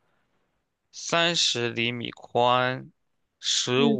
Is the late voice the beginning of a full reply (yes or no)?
no